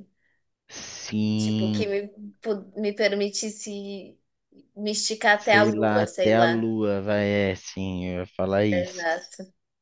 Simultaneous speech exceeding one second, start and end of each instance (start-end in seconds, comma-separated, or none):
5.3-6.7